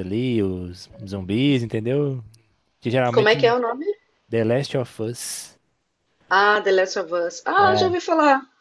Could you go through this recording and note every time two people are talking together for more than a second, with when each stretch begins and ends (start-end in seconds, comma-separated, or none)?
none